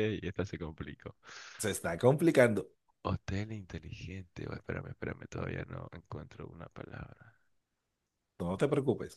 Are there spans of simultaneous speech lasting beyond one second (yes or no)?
no